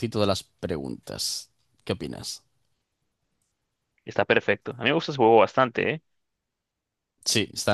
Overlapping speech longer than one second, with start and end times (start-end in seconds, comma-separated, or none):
none